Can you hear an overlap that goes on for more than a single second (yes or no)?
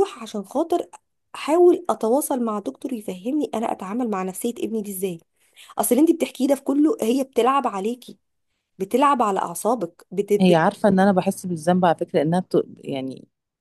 no